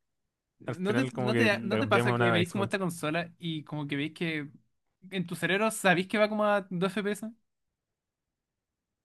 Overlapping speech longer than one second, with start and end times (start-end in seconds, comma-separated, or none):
0.7-2.8